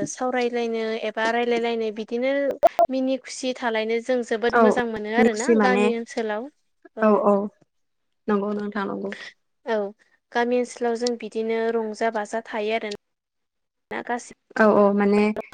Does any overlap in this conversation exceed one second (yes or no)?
no